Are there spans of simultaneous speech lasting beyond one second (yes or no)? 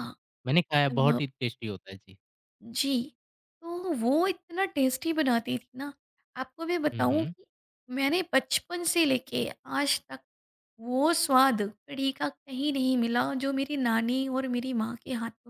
no